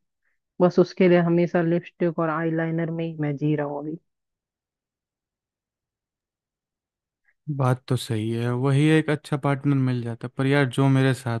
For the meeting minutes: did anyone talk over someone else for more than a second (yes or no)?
no